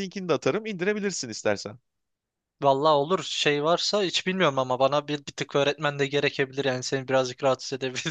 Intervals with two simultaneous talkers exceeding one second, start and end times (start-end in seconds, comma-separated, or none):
none